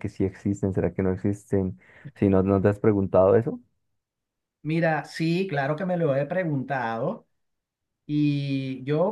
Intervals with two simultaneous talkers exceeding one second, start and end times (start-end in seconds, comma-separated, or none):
none